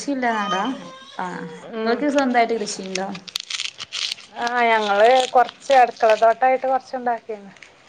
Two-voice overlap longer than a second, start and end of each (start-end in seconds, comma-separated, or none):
none